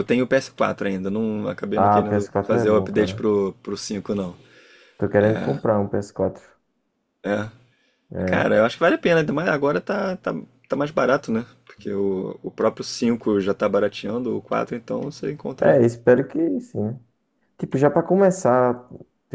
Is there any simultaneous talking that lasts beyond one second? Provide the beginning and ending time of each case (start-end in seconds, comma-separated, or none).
1.8-3.3